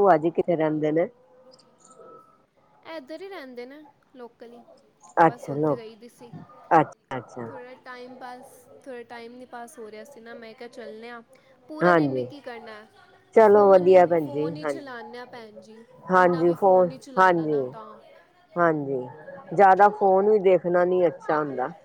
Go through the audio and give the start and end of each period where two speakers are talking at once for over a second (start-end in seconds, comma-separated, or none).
13.5-14.9